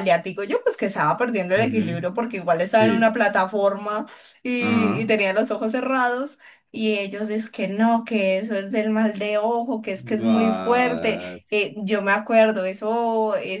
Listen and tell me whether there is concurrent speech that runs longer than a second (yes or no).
yes